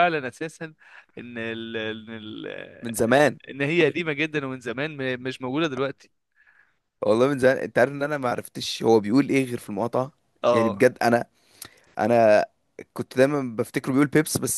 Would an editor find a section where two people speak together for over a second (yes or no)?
no